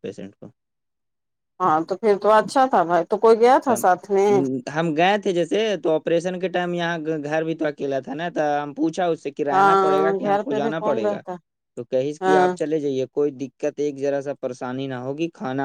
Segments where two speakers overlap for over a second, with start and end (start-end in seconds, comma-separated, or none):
9.5-11.2